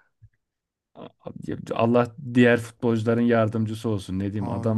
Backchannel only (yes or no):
yes